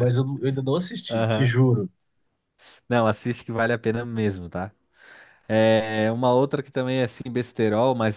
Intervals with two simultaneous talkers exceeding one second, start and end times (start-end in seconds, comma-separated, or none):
none